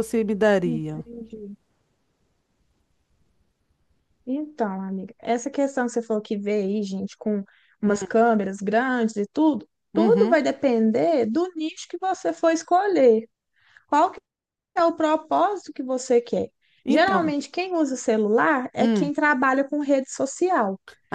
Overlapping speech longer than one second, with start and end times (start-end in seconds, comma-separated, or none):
none